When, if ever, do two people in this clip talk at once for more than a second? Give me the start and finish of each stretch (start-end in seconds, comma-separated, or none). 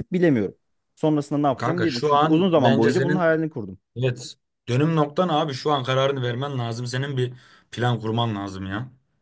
1.6-3.2